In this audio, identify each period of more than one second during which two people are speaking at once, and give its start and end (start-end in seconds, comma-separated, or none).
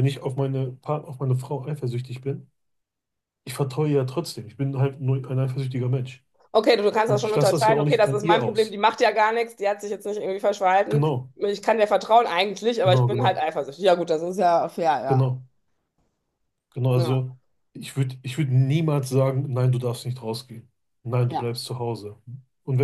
7.0-8.8